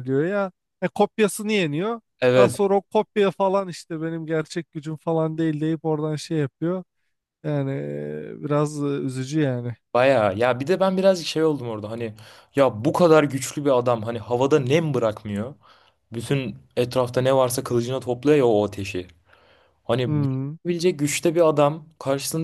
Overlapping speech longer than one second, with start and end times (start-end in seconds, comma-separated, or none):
none